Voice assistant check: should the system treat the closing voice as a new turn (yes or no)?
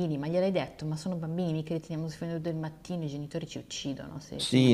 yes